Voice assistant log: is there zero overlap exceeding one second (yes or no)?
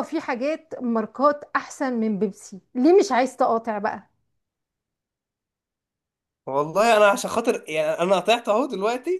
yes